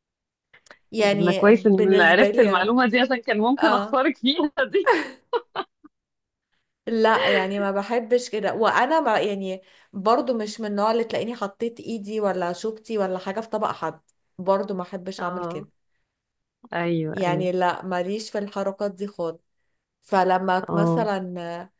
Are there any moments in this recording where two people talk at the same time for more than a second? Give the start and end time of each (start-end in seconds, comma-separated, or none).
1.0-2.7